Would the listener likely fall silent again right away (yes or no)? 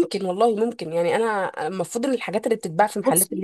no